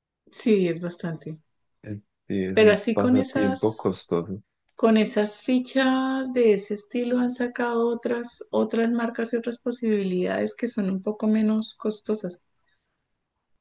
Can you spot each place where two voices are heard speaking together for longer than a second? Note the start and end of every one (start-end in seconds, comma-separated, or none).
2.5-4.0